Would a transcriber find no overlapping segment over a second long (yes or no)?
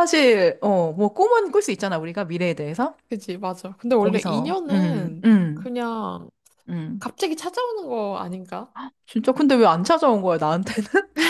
no